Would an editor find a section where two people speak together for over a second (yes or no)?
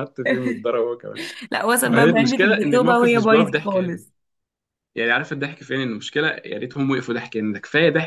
yes